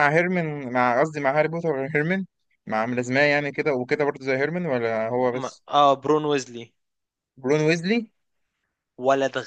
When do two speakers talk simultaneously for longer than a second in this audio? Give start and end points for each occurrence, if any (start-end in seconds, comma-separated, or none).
none